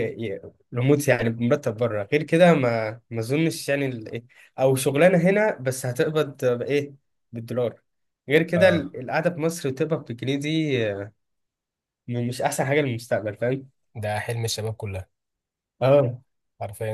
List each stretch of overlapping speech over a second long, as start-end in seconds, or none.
none